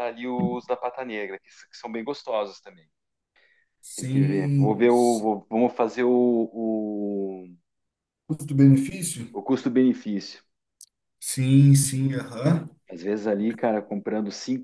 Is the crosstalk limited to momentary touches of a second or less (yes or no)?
no